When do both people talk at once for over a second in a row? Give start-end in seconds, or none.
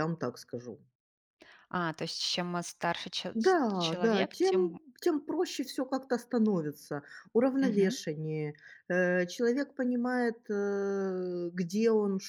3.3-4.8